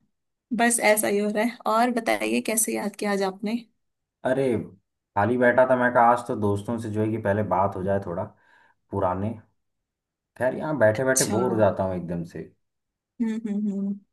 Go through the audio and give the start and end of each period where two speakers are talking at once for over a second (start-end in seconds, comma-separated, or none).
none